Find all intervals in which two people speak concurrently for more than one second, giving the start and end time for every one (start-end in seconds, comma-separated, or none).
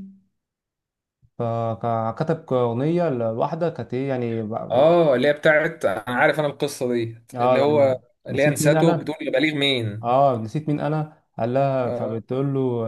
7.3-9.1